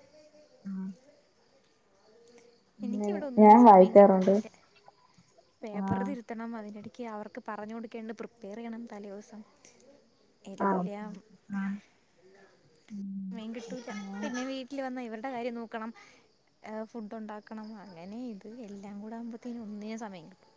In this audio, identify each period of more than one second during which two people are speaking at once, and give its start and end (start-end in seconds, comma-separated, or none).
2.9-4.3